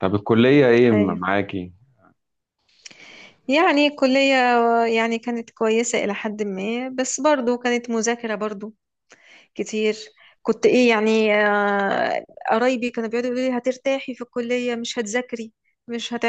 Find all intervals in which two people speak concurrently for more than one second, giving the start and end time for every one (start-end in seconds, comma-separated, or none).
none